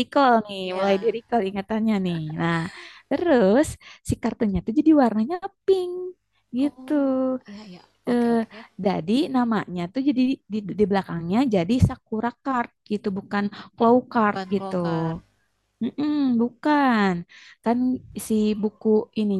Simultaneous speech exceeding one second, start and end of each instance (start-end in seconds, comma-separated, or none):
none